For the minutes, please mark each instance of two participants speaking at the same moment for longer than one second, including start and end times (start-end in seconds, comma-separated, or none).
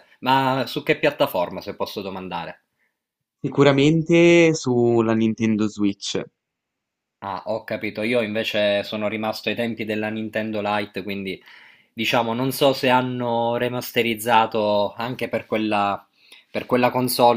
none